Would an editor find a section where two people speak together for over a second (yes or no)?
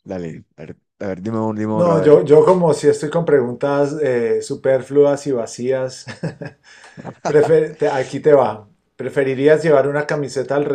no